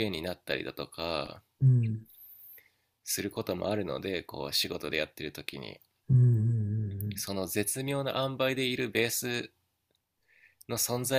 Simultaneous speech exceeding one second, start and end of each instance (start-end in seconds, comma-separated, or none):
none